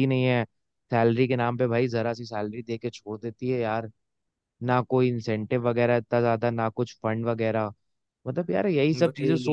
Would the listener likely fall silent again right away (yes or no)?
yes